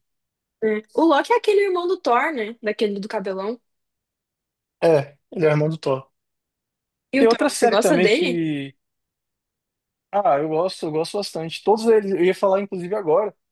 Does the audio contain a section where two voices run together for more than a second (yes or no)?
yes